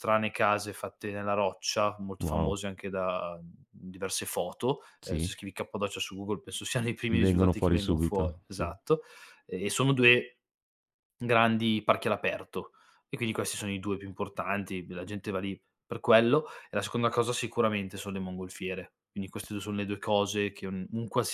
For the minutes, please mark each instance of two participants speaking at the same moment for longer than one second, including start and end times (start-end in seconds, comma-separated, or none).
7.1-8.7